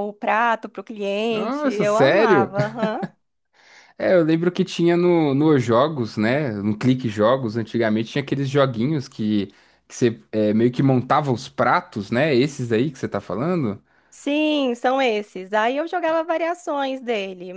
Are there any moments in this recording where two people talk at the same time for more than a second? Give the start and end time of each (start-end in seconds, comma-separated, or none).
1.3-2.5